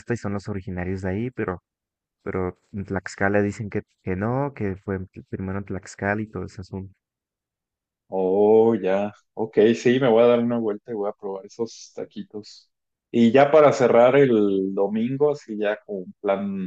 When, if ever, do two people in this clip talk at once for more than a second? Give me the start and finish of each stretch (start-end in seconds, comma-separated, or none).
none